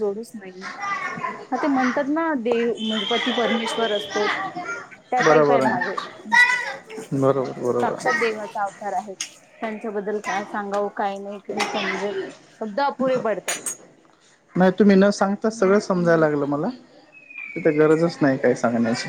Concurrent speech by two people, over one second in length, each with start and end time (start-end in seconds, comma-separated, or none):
none